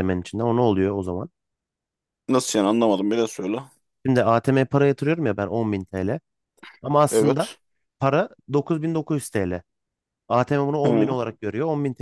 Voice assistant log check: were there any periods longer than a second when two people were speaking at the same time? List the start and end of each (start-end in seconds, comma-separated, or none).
none